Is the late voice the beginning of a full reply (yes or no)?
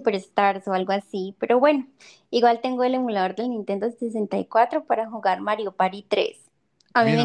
yes